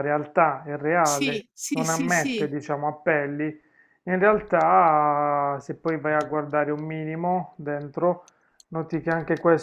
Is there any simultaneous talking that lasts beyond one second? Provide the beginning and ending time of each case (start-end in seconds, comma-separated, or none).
1.0-2.5